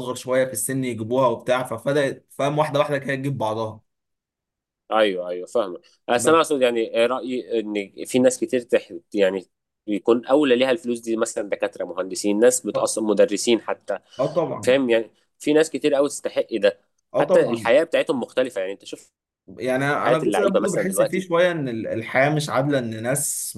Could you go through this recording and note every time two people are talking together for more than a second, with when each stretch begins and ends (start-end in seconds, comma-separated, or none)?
20.0-21.2